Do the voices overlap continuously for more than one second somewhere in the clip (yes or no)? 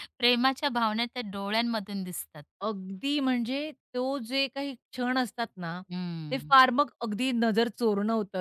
no